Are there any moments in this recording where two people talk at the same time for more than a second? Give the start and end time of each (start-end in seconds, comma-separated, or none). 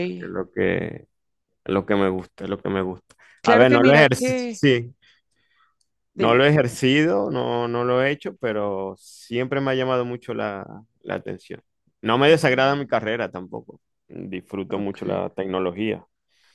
3.4-4.6